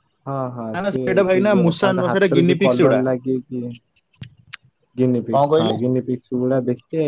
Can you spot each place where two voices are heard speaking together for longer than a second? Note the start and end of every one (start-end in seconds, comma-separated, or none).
0.7-3.0